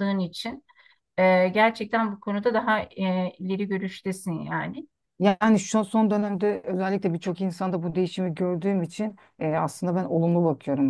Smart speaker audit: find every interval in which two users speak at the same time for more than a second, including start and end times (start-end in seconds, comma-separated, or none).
none